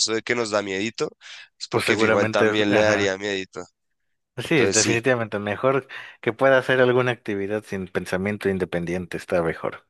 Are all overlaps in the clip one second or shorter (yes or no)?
no